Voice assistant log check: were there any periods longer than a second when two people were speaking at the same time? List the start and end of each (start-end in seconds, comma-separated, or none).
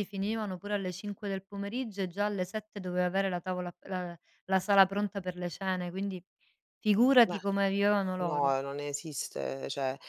none